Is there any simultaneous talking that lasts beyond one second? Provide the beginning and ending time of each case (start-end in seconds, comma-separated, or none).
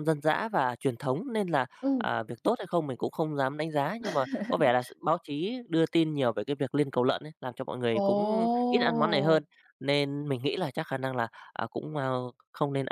8.0-9.4